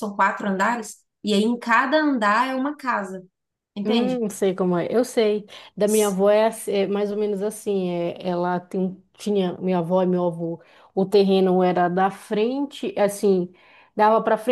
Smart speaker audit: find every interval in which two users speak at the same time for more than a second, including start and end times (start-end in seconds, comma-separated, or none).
none